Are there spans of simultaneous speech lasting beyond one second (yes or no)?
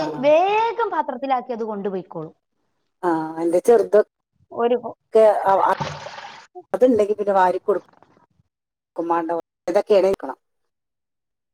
no